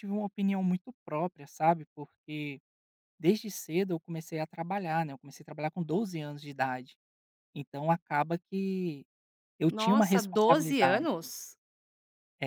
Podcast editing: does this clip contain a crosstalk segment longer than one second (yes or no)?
yes